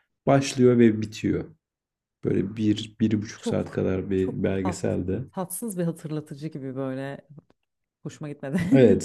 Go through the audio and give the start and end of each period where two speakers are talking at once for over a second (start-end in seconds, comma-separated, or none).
3.4-5.2